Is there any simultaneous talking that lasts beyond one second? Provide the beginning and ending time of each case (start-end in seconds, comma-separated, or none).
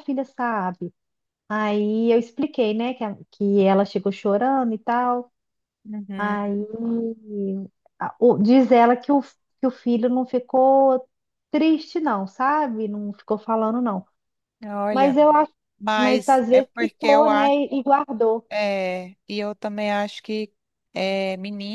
15.9-17.6